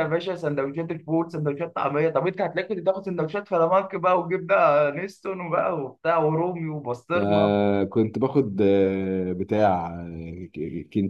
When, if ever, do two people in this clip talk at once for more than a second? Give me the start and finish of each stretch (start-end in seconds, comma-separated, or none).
none